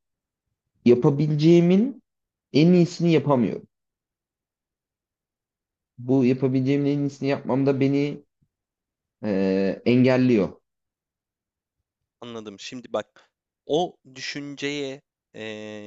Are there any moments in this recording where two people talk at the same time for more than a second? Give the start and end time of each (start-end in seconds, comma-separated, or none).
none